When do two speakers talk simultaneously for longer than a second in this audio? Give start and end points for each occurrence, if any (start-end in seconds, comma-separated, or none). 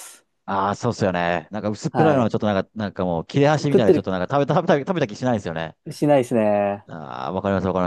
none